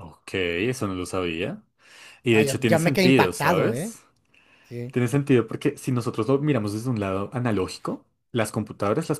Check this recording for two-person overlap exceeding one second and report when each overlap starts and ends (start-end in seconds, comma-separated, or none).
2.3-4.0